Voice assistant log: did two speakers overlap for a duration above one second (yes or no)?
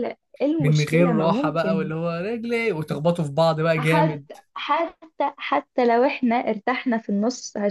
yes